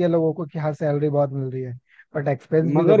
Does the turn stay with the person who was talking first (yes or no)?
no